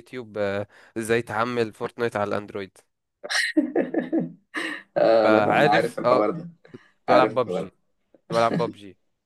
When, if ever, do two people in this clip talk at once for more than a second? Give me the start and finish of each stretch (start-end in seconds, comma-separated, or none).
5.2-6.5